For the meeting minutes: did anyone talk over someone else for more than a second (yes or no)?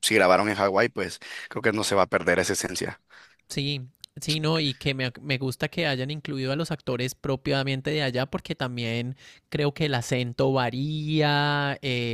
no